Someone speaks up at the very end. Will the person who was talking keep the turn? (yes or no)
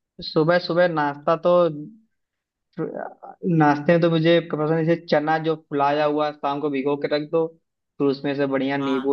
yes